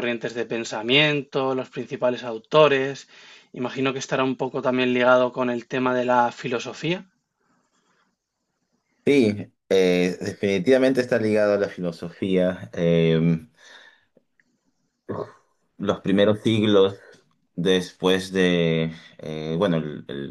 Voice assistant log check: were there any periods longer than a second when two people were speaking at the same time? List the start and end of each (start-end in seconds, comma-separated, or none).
none